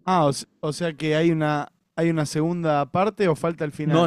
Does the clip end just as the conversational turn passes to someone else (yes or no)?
yes